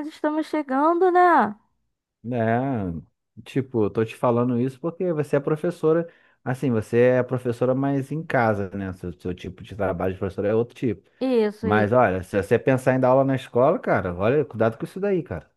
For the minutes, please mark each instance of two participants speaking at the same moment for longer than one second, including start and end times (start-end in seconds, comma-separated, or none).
none